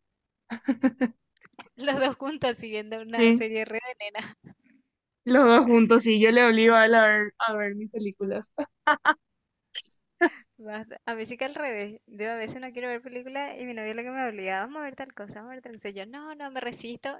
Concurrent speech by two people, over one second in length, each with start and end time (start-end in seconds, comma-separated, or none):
none